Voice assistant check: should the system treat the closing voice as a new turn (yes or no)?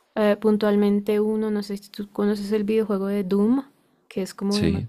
no